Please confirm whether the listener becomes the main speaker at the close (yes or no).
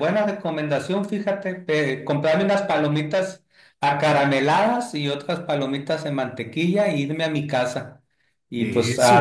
no